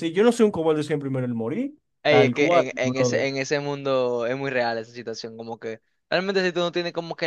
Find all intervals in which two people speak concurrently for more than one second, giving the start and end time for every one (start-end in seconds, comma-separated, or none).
2.0-3.3